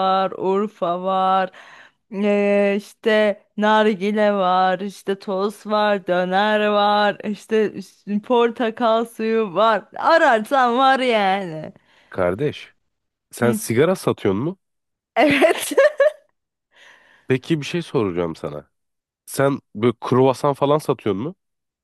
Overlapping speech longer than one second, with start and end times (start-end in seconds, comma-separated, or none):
none